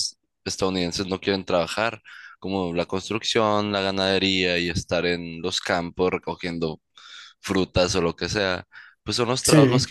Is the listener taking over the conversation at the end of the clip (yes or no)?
no